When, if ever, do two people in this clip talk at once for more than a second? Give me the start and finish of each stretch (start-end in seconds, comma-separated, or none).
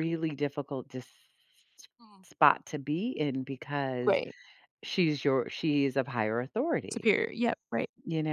none